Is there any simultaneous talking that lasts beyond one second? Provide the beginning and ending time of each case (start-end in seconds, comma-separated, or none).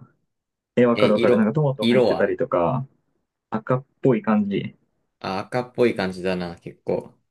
0.9-2.4